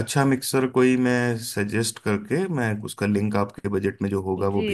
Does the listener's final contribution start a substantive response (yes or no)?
yes